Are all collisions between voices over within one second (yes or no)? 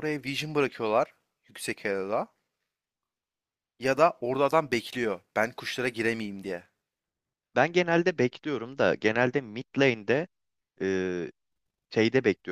yes